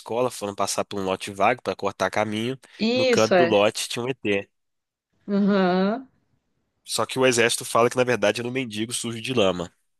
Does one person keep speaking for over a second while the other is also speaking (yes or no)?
no